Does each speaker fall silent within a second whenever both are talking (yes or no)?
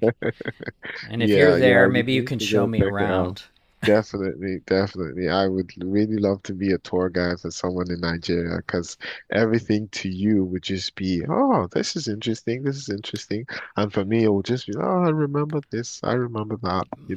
no